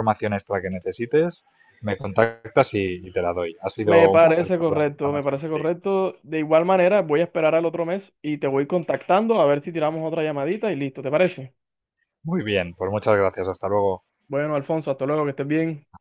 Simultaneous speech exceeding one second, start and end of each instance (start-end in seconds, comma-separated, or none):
3.9-5.7